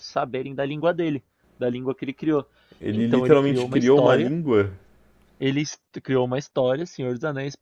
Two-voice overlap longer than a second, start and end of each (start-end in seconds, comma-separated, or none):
2.9-4.3